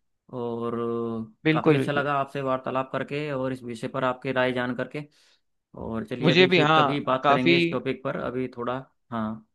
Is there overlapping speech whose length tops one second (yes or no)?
yes